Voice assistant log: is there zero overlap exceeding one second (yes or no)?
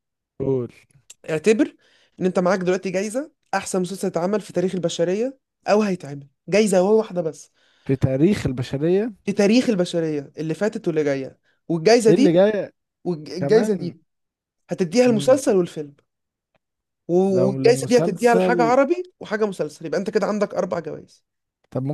no